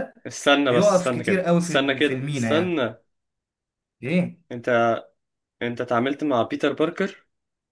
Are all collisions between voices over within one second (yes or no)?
no